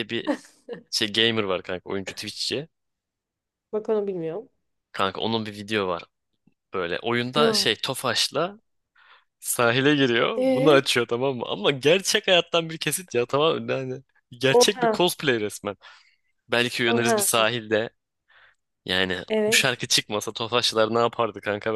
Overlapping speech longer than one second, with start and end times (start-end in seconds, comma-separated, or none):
none